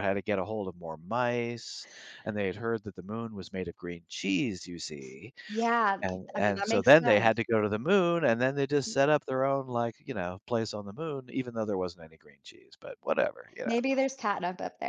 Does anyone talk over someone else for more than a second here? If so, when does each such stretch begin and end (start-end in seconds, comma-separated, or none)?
6.0-7.5